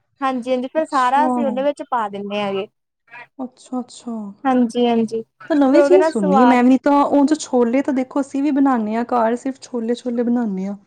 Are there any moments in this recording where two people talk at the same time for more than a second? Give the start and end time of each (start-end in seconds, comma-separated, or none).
5.5-6.7